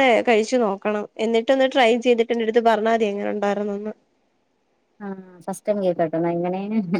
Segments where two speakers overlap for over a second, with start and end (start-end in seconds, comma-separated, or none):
none